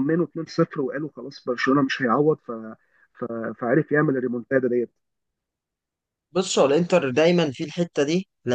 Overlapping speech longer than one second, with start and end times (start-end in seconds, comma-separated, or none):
none